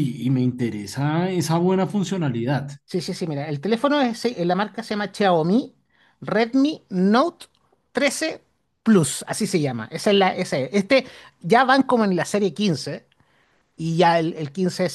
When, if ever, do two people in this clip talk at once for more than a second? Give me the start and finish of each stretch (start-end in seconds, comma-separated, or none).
none